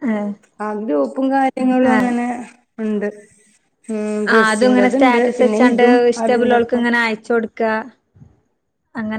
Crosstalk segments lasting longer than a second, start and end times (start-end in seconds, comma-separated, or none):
4.3-6.8